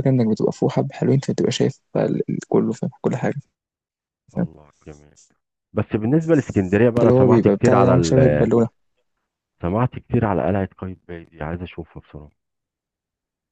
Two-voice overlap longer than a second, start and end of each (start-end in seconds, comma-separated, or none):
7.0-8.2